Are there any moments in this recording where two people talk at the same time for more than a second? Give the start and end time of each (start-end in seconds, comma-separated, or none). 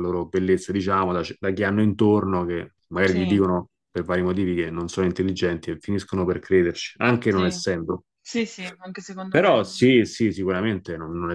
none